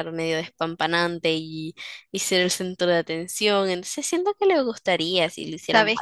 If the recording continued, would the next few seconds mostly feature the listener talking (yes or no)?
yes